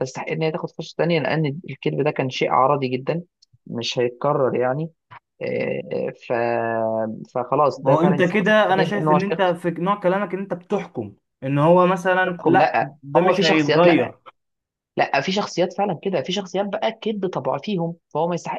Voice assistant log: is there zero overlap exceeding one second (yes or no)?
no